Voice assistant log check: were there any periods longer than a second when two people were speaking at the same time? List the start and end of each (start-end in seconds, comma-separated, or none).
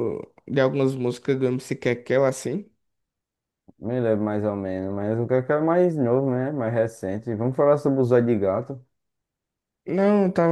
none